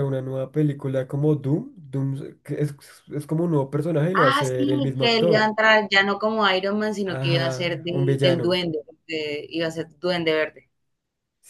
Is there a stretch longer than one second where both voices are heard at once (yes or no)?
yes